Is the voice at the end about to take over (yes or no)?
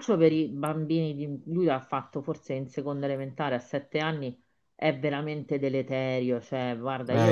no